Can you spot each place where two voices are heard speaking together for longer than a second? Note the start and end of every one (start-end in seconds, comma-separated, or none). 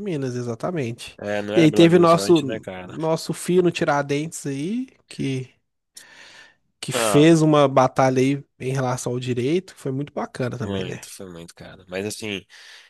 1.2-2.9